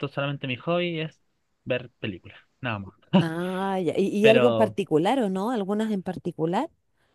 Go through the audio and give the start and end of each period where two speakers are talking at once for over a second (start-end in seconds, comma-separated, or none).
none